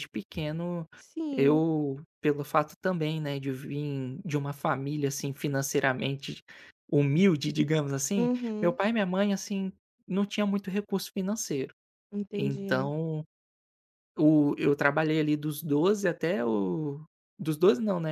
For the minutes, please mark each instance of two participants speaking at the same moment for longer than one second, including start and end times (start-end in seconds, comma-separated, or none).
none